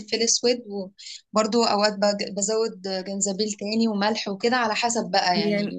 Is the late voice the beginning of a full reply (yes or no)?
yes